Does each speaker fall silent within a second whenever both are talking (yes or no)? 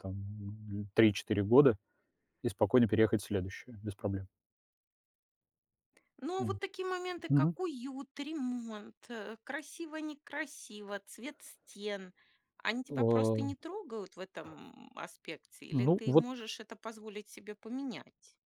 yes